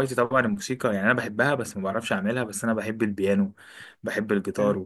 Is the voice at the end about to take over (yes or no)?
no